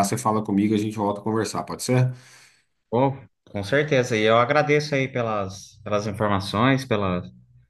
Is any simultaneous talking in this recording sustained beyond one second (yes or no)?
no